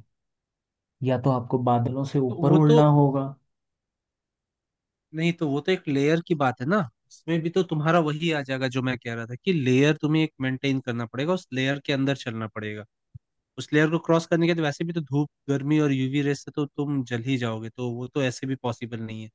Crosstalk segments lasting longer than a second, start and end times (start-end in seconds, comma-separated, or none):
none